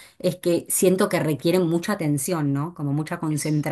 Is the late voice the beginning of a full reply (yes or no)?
no